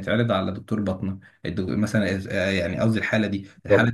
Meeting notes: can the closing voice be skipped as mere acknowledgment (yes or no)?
yes